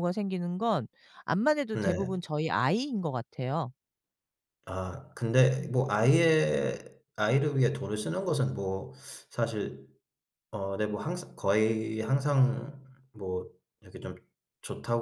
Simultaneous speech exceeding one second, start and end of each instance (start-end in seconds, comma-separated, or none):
none